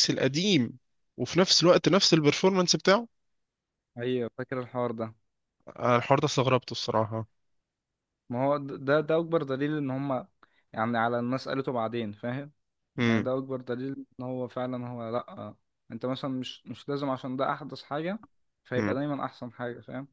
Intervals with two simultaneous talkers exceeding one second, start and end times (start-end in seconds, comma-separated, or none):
none